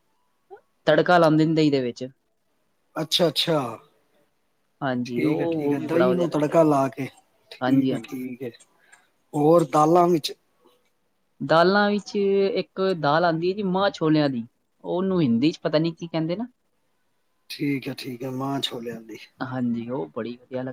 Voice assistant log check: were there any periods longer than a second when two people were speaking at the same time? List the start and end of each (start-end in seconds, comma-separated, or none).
5.0-6.7